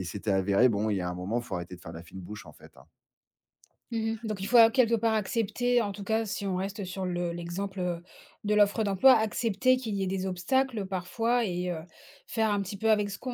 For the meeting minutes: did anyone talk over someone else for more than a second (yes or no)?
no